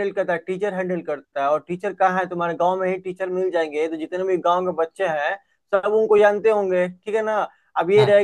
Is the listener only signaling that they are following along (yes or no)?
yes